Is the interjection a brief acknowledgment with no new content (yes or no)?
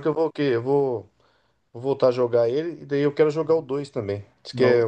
yes